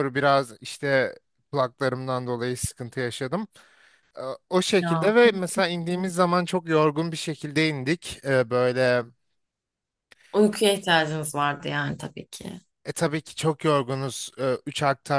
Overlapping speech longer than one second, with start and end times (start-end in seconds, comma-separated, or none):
4.8-6.1